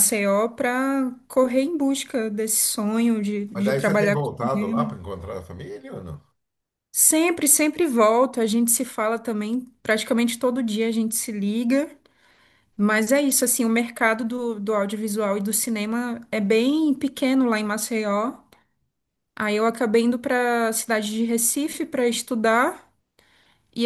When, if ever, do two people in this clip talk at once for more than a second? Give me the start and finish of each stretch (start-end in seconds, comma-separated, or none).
3.5-5.0